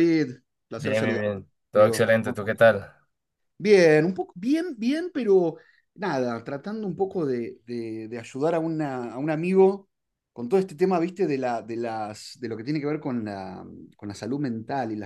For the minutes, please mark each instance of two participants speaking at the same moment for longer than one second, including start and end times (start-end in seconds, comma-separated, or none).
0.8-2.7